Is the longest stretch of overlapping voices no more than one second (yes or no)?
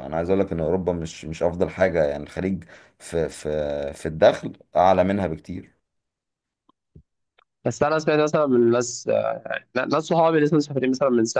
yes